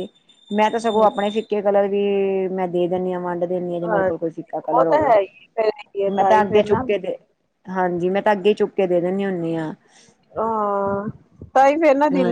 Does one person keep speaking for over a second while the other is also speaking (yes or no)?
no